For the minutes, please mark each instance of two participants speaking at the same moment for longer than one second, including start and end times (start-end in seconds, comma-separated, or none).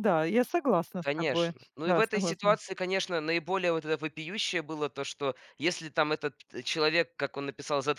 1.0-2.6